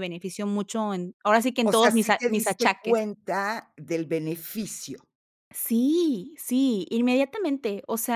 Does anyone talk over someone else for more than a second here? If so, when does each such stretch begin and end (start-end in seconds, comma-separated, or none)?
1.6-3.0